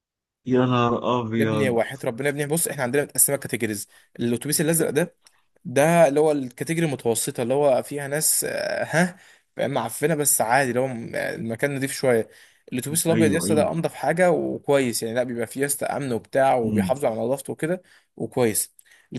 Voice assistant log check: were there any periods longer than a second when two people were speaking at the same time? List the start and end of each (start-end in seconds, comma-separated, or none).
none